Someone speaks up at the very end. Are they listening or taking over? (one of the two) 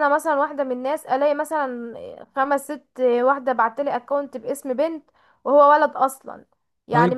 listening